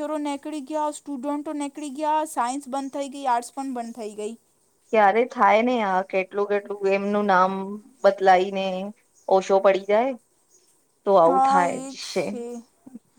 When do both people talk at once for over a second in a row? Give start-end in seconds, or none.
none